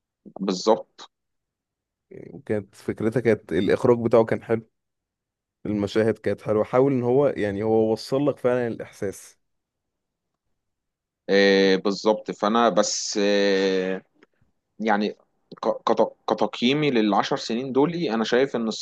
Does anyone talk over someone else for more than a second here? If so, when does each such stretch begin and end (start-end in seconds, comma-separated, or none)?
none